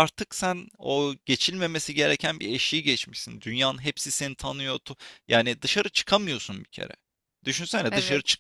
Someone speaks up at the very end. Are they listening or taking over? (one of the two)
listening